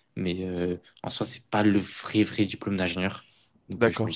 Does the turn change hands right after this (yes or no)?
no